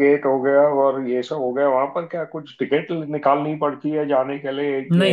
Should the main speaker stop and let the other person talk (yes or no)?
no